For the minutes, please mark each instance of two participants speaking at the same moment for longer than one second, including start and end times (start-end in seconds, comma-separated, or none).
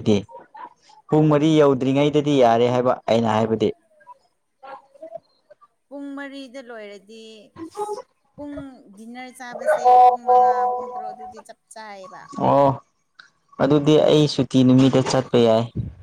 none